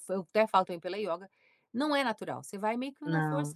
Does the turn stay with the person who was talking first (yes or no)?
yes